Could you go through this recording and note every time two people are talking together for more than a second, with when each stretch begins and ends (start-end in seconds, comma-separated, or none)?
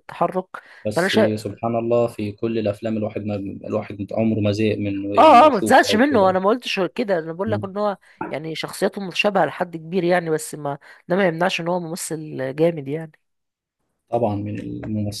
5.2-6.4